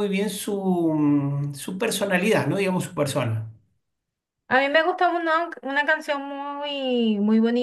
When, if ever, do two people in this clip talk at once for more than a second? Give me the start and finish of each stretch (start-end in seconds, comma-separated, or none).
none